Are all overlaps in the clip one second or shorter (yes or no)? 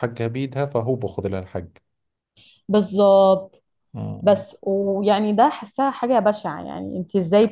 yes